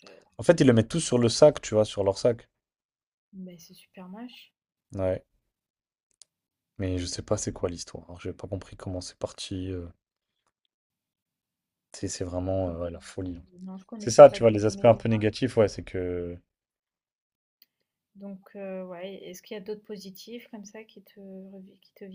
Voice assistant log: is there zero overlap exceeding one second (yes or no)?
no